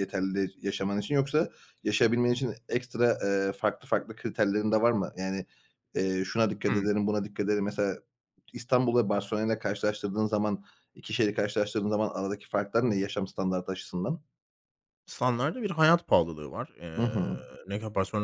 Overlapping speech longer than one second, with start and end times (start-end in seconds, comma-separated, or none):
none